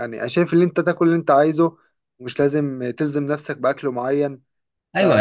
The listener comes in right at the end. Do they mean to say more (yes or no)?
yes